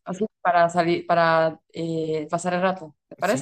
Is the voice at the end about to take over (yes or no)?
yes